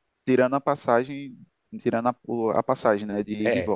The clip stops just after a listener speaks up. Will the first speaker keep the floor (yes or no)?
no